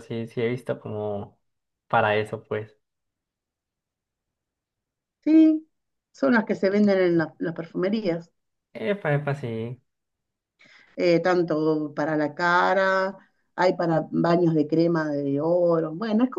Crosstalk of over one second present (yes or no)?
no